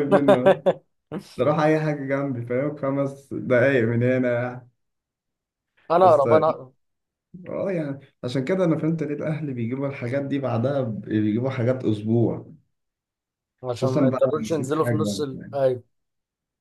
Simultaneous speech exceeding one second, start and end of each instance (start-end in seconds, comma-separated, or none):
13.8-15.6